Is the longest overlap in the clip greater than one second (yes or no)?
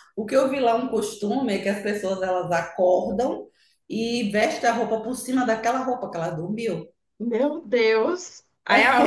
no